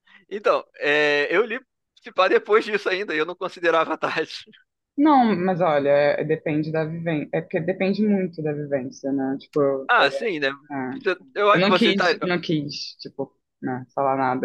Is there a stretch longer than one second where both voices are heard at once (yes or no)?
no